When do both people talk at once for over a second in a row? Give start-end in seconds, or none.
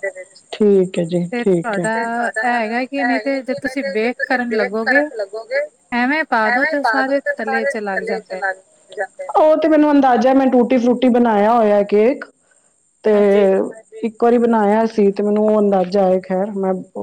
1.3-5.0, 6.5-8.4